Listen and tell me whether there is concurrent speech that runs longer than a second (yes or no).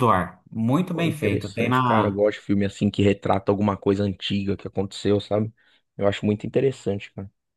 yes